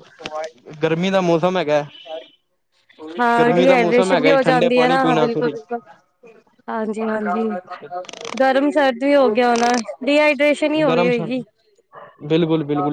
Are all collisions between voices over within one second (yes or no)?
no